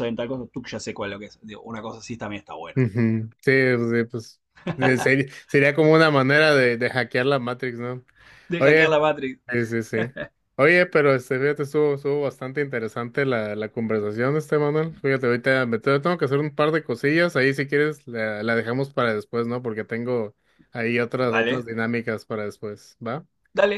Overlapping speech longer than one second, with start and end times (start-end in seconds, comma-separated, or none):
none